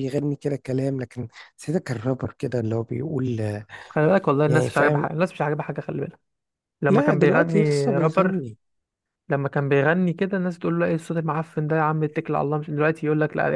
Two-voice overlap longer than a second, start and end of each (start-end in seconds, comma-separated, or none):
6.9-8.4